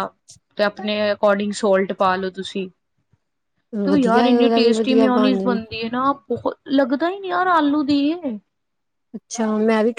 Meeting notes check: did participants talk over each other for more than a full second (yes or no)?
yes